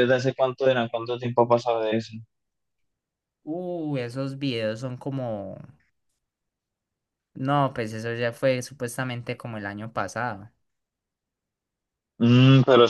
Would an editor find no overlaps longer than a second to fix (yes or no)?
yes